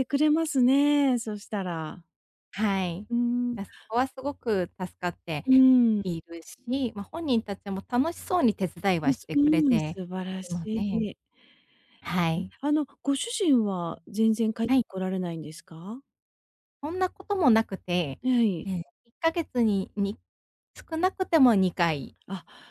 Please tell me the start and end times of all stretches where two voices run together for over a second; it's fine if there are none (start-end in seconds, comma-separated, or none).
9.0-11.1